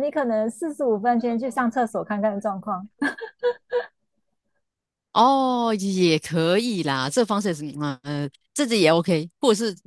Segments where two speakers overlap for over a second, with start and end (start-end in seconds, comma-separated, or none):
none